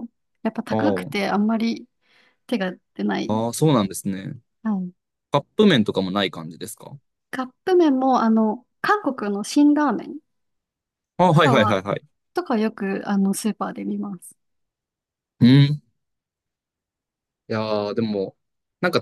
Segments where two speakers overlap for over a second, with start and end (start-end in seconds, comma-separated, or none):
none